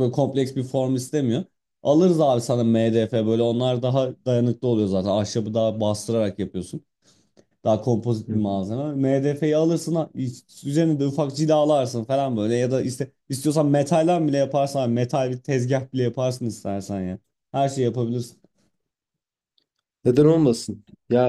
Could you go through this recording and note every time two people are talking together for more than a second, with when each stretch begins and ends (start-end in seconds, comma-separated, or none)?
none